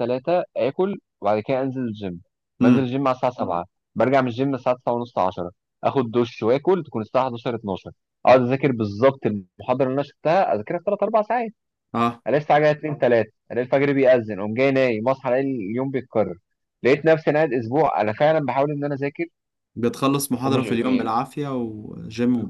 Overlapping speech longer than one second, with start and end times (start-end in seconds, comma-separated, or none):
none